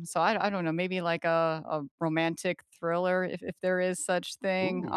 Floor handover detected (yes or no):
no